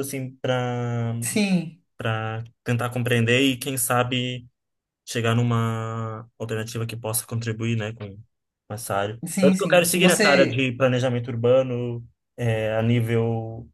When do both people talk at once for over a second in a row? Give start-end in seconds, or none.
9.2-10.7